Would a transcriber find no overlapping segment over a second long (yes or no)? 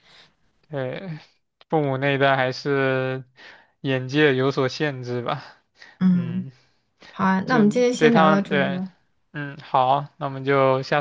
no